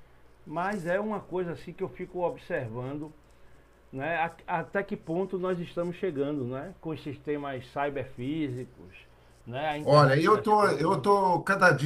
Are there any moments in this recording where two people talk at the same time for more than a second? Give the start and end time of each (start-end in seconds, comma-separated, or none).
9.9-11.1